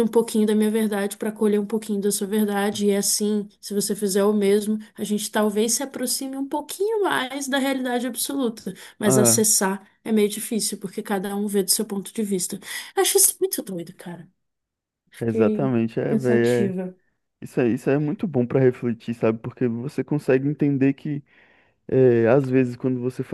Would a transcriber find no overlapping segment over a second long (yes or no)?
no